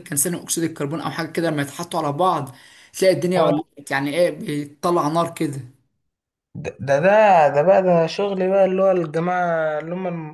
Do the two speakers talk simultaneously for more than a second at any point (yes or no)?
no